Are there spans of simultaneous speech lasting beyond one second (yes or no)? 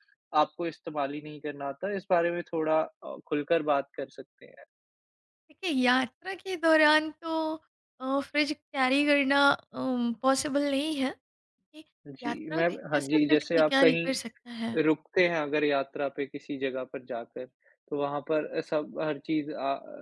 yes